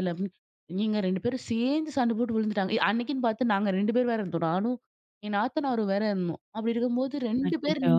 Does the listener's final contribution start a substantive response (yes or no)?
no